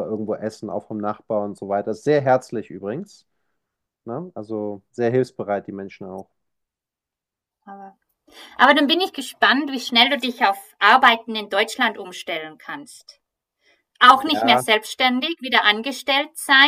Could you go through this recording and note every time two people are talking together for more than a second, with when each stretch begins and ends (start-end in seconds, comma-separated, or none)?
none